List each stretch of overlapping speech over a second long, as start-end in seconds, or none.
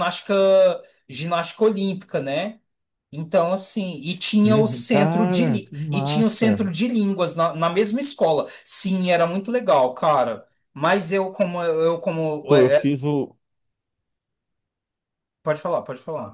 4.5-6.7